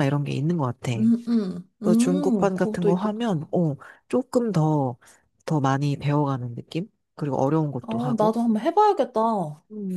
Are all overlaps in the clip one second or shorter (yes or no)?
no